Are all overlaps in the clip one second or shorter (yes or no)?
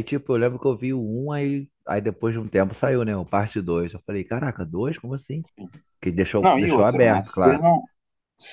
no